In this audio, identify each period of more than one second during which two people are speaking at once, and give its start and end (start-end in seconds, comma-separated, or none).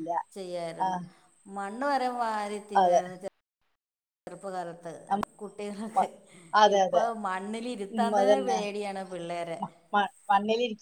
none